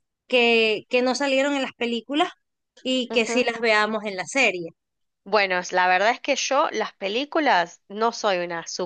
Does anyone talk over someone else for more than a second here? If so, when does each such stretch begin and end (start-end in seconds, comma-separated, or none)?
none